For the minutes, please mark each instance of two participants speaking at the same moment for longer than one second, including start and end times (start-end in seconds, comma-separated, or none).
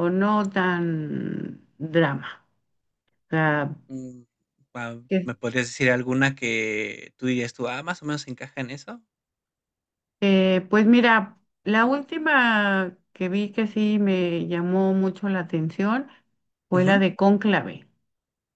none